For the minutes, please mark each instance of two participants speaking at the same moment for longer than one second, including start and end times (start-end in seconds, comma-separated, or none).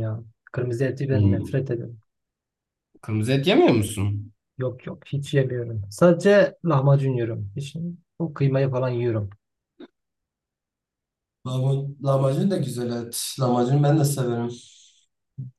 none